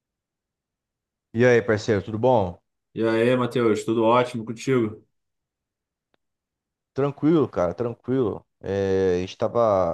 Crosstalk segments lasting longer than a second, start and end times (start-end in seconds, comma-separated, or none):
none